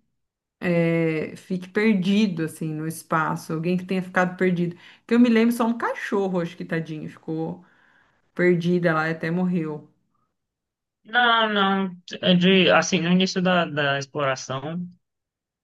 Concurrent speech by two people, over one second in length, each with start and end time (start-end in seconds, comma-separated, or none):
none